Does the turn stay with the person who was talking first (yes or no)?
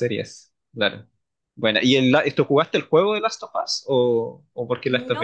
no